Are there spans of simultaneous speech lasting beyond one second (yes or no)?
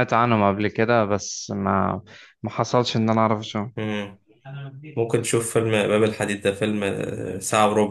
no